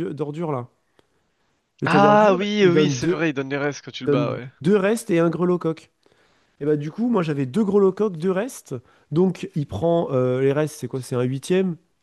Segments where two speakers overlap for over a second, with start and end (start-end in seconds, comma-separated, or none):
1.8-3.2